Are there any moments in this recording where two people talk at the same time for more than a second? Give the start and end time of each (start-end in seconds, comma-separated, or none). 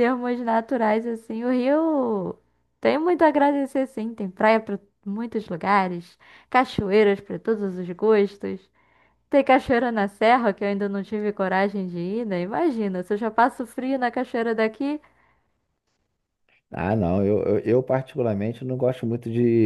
none